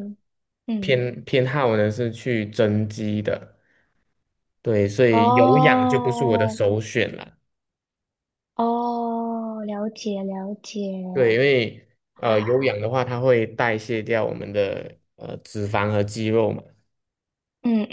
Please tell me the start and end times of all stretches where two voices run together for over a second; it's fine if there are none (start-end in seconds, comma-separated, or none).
5.1-6.6